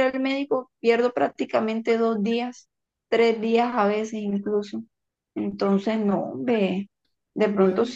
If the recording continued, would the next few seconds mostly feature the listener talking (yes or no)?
no